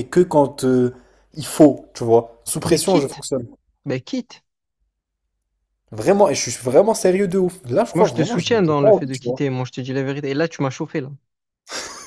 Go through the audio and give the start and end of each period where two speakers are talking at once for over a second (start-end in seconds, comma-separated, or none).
7.9-9.4